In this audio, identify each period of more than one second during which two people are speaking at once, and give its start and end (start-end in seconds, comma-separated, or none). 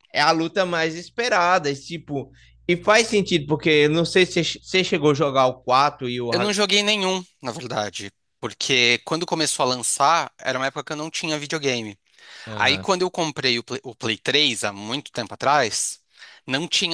none